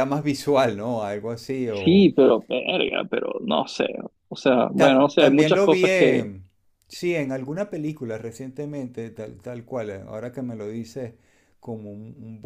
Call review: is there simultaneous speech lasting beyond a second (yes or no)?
yes